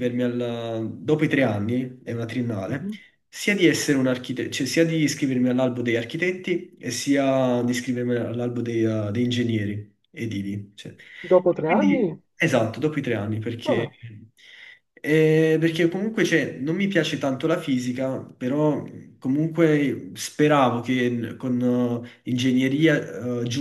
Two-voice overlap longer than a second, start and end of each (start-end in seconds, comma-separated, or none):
none